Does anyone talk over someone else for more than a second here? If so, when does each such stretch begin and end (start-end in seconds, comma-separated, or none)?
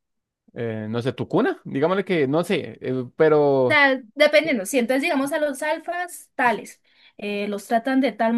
none